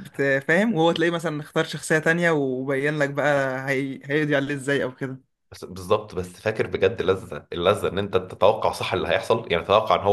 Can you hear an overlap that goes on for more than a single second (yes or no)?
no